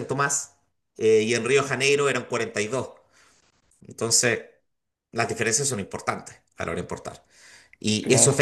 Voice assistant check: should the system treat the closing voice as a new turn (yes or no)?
no